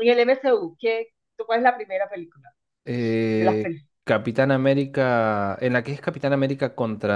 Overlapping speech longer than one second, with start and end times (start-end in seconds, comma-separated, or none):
none